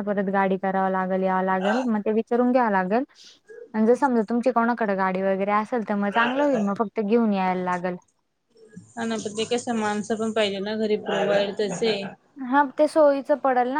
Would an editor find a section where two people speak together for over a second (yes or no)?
no